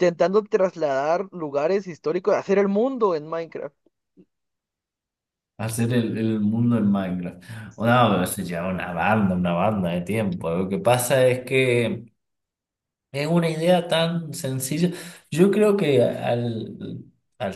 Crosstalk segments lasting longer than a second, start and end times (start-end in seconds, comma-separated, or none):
none